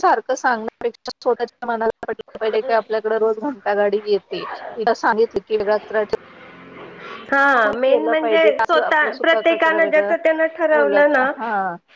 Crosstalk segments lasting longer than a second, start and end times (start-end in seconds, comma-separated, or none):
7.6-10.1